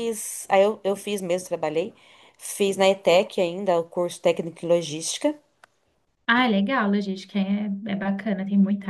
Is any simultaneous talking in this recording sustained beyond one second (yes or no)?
no